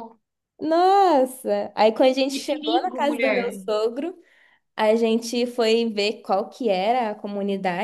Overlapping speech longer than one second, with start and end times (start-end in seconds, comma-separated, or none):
2.3-3.6